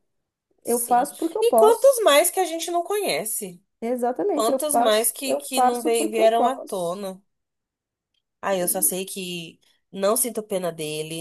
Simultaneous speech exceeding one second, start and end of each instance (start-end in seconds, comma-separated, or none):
0.6-2.0, 4.3-7.0